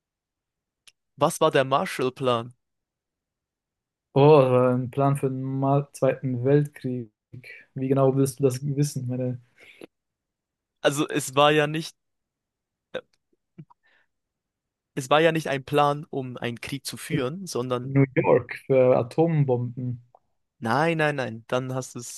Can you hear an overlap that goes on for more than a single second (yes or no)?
no